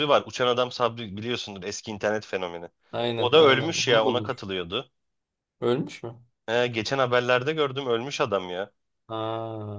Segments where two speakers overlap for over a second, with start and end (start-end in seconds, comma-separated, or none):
3.2-4.4